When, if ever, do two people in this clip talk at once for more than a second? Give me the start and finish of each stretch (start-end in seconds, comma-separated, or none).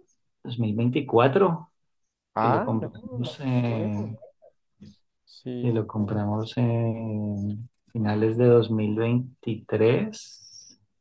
2.4-4.2